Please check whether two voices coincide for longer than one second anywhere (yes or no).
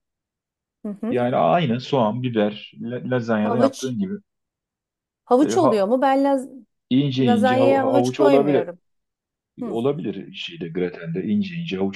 yes